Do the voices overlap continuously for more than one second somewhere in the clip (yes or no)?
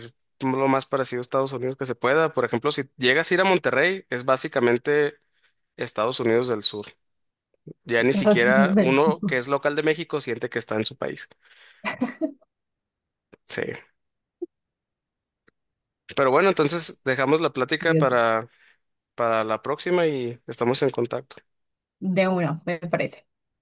yes